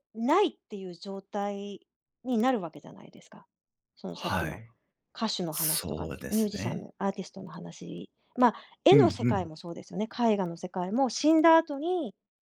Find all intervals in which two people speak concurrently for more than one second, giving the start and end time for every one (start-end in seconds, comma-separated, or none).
5.5-6.9